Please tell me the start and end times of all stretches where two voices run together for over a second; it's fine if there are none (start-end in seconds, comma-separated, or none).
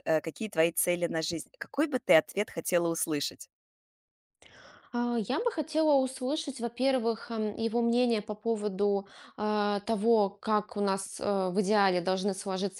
none